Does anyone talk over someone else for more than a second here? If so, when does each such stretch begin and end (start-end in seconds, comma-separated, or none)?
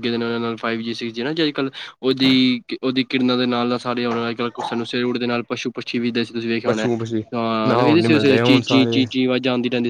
7.7-9.0